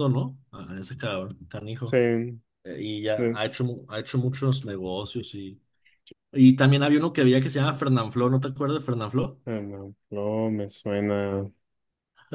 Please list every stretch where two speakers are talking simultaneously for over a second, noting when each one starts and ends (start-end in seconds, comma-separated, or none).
none